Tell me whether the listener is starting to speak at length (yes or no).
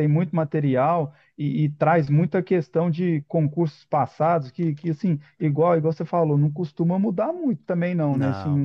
no